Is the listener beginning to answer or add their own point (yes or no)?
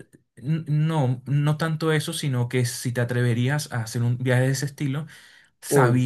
no